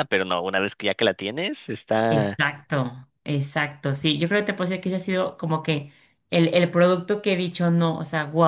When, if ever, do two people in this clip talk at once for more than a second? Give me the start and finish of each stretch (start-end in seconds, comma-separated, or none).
none